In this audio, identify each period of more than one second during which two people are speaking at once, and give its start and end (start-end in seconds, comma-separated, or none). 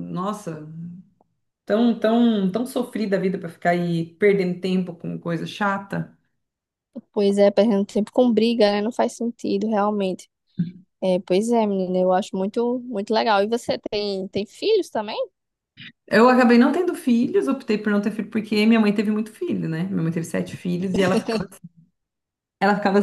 none